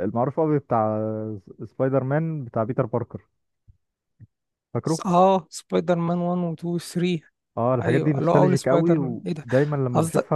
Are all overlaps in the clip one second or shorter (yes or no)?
no